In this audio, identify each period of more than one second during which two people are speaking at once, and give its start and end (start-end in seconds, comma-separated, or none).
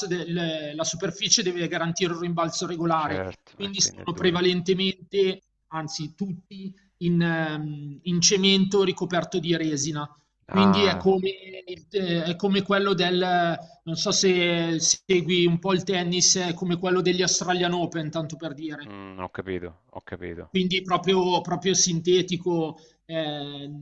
2.9-4.4